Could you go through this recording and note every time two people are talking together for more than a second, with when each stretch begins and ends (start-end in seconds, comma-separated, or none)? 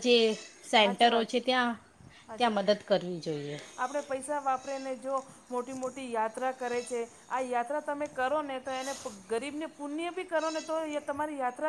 none